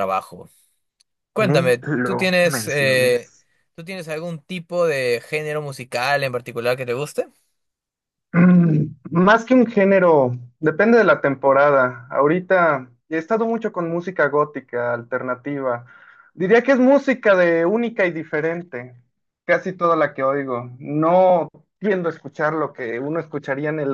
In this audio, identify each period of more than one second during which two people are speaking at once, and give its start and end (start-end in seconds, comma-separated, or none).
1.4-3.3